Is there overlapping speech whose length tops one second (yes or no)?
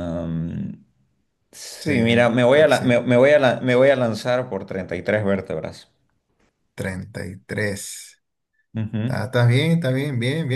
yes